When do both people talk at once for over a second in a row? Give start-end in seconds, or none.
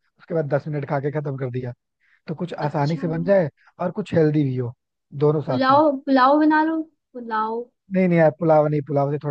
none